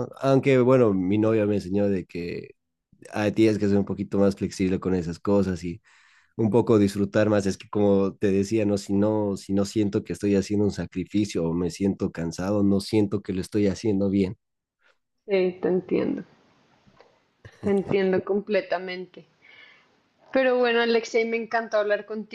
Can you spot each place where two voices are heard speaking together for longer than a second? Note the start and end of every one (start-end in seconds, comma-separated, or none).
none